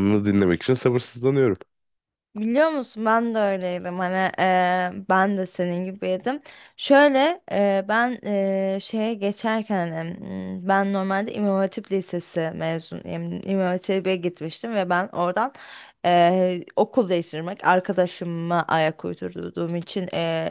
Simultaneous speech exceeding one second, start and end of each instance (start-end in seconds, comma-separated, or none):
none